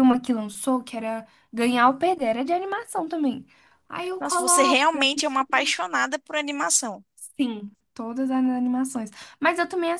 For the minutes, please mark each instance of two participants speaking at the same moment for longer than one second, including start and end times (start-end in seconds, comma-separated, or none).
4.2-5.5